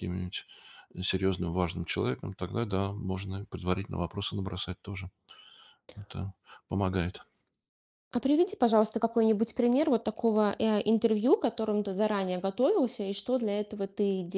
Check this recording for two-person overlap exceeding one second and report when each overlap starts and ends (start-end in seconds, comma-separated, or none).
none